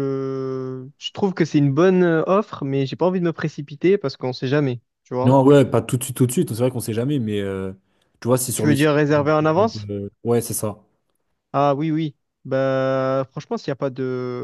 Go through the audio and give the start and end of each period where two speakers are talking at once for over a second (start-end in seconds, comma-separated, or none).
none